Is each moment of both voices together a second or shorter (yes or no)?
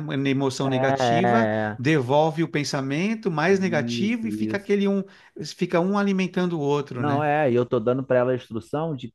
no